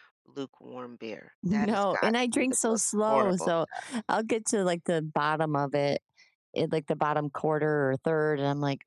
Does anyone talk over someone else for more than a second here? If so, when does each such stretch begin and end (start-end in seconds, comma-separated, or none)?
1.4-3.5